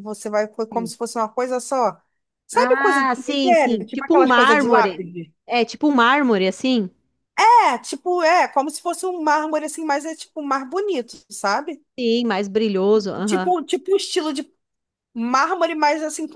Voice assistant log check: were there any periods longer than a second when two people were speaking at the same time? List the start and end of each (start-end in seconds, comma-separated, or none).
2.5-5.1